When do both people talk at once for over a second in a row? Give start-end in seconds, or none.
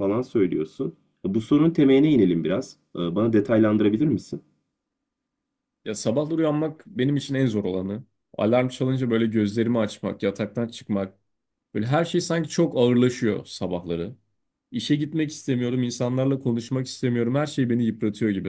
none